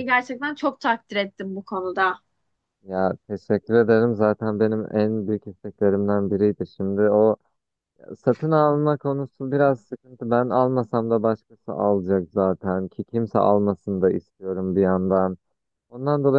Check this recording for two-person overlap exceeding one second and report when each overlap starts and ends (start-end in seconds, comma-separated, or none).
none